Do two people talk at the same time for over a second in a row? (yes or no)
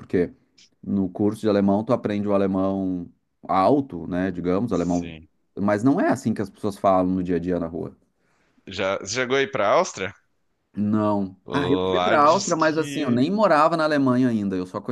yes